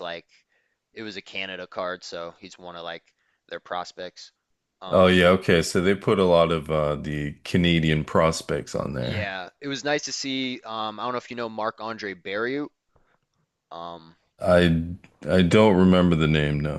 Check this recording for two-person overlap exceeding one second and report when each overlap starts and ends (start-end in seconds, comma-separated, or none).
none